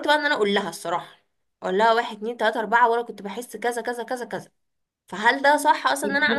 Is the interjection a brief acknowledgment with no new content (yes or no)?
no